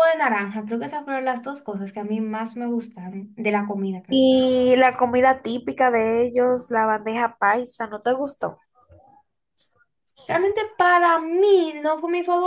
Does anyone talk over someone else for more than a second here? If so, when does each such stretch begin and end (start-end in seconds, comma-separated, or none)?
none